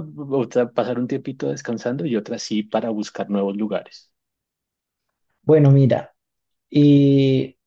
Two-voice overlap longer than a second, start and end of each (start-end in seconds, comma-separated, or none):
none